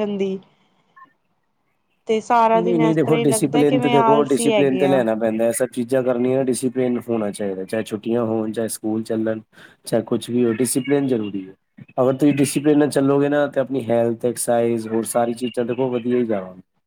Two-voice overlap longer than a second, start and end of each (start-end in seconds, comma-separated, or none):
2.5-5.0